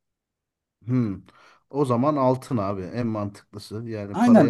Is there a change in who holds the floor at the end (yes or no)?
yes